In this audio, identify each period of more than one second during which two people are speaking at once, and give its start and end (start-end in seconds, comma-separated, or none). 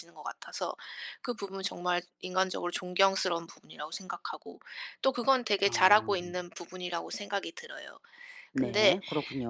none